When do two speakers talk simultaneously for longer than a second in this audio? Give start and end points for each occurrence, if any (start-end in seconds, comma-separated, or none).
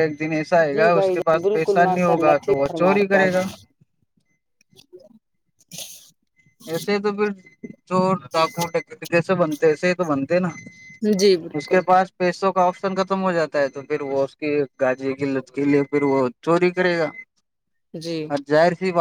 0.6-3.3